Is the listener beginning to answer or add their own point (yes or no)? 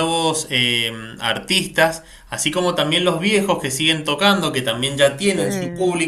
no